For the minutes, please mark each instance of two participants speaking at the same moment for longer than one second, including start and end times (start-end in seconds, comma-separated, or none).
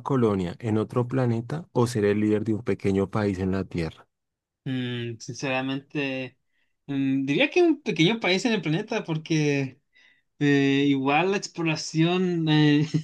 none